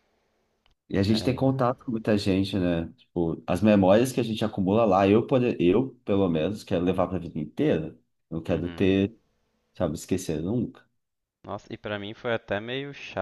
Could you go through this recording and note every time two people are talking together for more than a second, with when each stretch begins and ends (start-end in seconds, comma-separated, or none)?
none